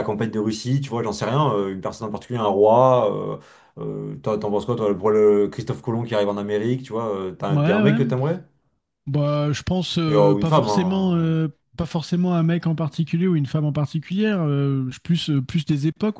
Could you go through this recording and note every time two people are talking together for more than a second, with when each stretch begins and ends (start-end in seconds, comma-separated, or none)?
10.1-11.4